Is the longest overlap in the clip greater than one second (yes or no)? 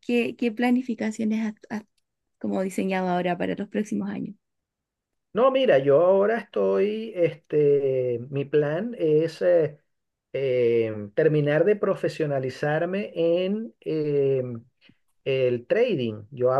no